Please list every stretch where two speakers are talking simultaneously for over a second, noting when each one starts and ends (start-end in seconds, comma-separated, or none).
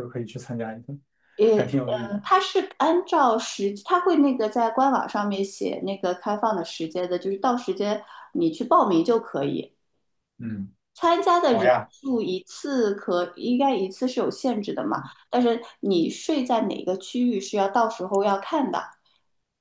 none